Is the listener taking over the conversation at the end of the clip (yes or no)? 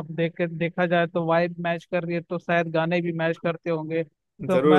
no